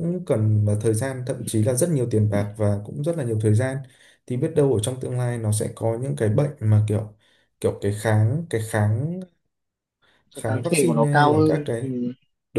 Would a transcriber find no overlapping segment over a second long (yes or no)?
no